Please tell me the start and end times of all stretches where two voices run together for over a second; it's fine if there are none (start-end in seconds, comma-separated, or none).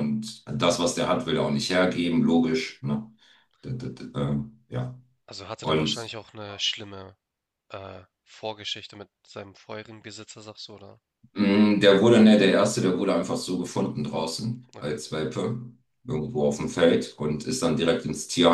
none